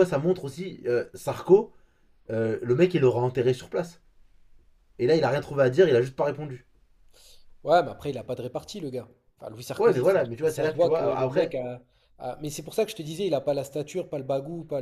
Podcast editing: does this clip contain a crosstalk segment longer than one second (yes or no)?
yes